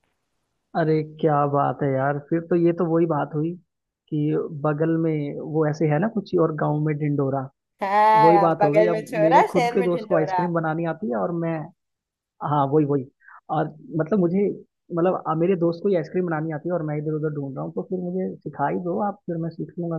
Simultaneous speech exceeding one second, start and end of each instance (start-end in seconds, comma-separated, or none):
8.2-10.4